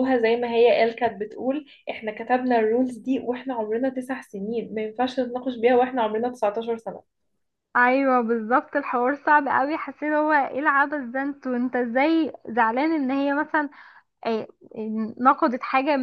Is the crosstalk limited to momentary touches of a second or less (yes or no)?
yes